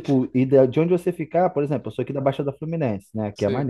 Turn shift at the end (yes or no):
no